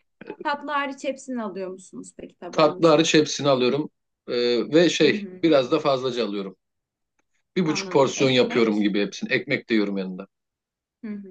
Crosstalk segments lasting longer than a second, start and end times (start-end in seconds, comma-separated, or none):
7.7-8.9